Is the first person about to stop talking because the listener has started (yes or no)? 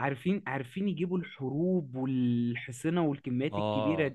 yes